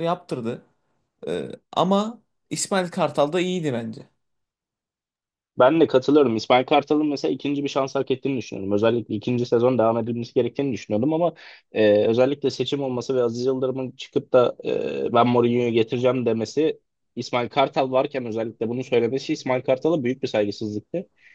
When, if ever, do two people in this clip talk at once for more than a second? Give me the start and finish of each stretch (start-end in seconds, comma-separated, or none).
none